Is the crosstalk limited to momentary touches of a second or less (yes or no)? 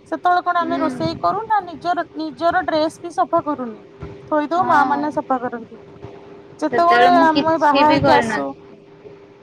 no